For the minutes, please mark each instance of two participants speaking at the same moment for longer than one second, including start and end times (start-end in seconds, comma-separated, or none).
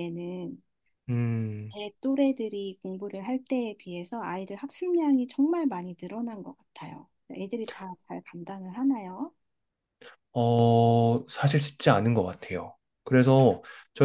none